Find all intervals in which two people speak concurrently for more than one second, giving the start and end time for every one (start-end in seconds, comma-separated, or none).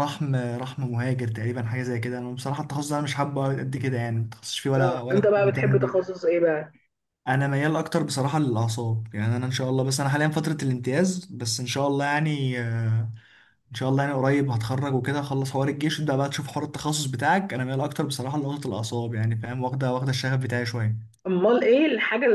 4.8-6.1